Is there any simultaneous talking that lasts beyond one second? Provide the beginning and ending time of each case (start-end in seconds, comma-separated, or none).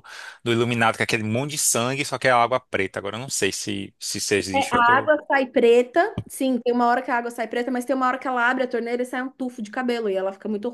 none